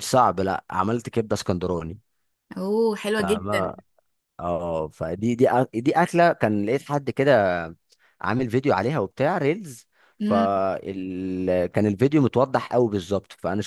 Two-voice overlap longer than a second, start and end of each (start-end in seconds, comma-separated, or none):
none